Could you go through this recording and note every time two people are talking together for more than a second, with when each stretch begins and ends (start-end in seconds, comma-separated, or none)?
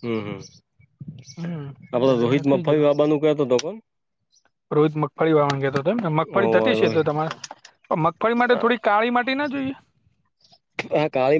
none